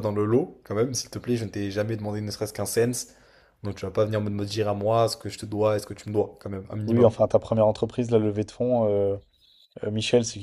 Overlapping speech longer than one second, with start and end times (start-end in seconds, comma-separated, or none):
none